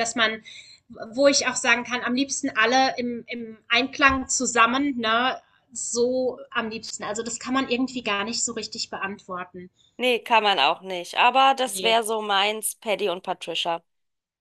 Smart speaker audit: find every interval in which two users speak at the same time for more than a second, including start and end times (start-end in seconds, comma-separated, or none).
none